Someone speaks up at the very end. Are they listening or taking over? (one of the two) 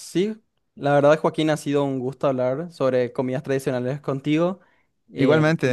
listening